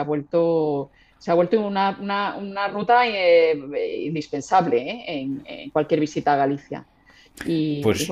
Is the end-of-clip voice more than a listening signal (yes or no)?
yes